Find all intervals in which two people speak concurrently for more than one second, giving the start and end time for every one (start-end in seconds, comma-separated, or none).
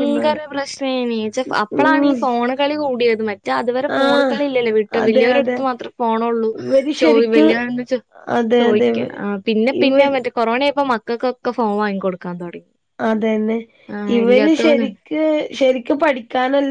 none